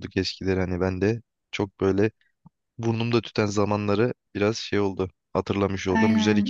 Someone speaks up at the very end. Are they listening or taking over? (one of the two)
taking over